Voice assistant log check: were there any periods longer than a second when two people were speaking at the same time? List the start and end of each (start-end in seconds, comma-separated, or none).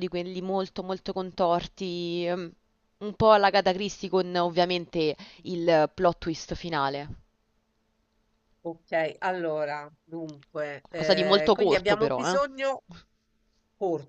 10.8-12.4